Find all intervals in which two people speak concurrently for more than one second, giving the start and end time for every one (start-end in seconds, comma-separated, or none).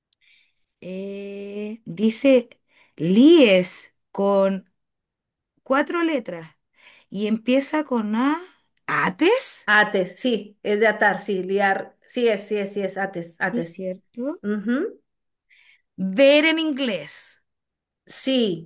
none